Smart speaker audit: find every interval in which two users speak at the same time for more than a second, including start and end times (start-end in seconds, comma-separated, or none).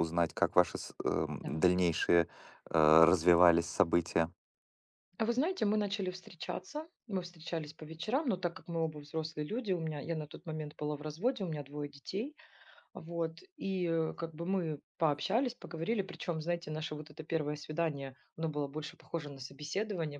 none